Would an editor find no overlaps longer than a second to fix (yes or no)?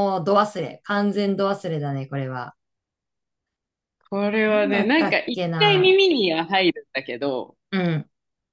no